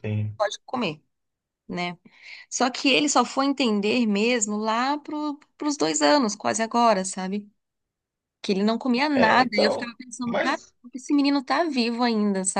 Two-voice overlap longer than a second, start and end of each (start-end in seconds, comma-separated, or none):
9.1-10.7